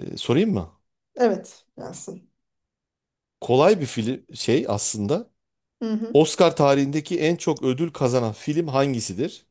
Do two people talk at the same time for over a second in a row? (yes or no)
no